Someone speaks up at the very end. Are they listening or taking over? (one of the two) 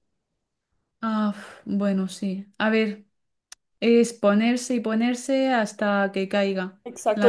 taking over